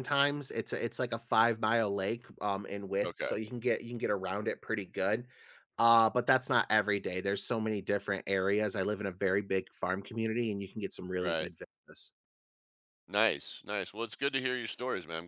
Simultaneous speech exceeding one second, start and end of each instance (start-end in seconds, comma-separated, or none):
none